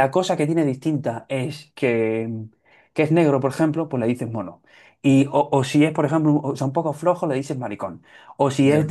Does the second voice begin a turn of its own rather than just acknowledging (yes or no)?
no